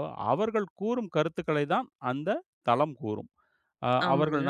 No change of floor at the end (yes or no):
yes